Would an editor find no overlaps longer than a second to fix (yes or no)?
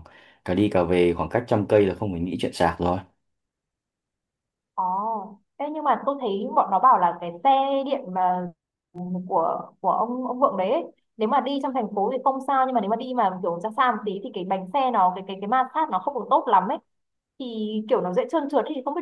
yes